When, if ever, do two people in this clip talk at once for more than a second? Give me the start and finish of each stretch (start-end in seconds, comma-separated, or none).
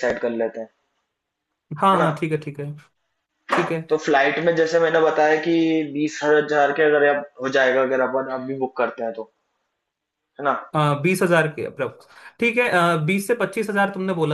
none